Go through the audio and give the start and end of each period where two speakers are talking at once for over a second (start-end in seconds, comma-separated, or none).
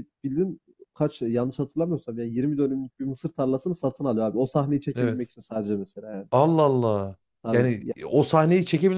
none